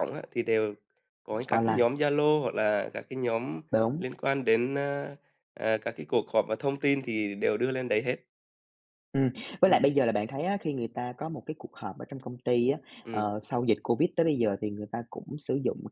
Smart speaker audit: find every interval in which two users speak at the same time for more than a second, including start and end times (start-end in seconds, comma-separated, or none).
none